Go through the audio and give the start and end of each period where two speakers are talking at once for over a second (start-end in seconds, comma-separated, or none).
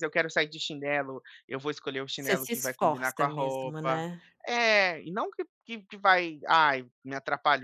2.1-4.1